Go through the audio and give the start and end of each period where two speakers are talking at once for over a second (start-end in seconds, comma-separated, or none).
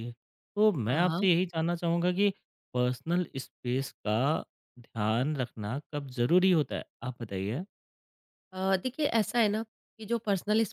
none